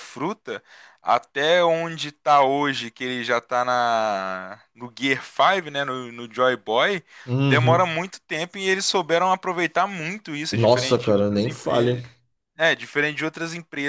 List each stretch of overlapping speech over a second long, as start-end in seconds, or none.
10.5-12.0